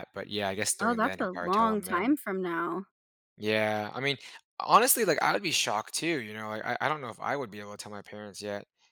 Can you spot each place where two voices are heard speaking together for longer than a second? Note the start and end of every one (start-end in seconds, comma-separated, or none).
0.8-2.2